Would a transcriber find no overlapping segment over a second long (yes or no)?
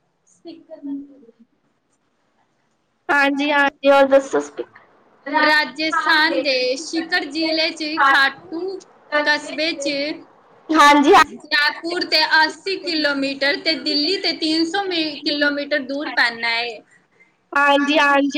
yes